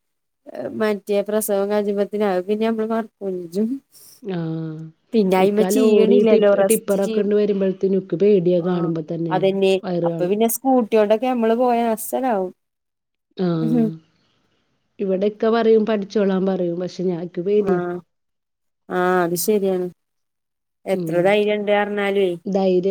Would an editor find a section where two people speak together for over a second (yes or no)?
yes